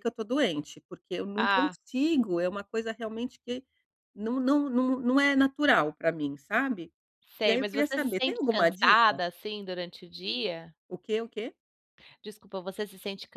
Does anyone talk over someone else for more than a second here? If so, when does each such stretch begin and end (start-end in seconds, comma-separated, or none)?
7.5-9.2